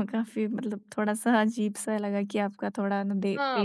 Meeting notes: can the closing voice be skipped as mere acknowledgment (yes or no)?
no